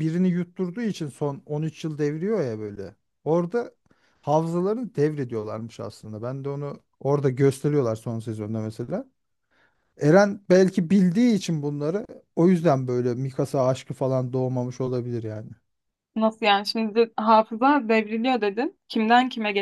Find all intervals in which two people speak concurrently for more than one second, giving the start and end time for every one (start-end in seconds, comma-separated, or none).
none